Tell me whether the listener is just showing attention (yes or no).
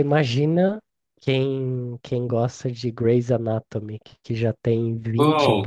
yes